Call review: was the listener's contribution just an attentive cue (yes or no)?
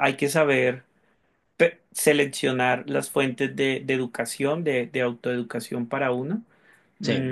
yes